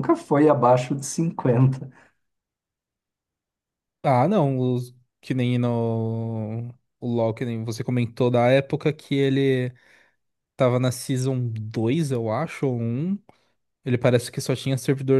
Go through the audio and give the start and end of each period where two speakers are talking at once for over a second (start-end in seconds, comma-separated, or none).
none